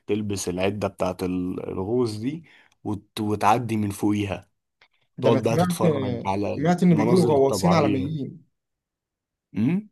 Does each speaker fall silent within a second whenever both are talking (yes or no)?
no